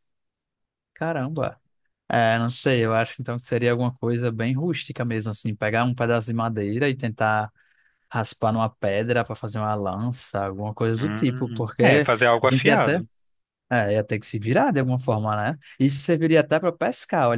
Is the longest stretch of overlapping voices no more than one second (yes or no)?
no